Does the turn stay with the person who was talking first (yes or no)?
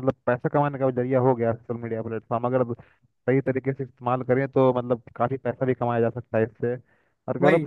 yes